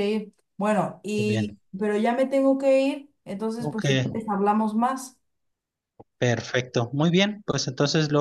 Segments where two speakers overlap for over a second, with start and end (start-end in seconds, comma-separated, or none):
none